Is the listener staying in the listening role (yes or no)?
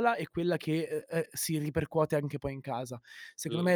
yes